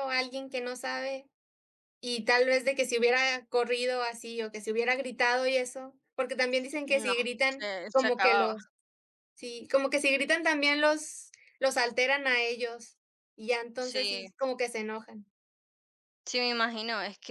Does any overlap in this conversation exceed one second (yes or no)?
yes